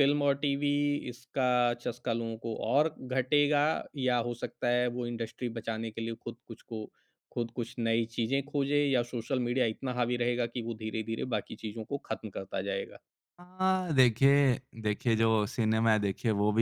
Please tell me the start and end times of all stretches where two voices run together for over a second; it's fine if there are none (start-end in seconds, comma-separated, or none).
none